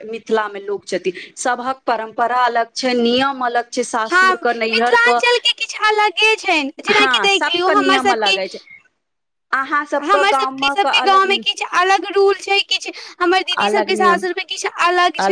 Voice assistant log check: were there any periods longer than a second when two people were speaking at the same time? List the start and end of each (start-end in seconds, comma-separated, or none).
6.9-8.4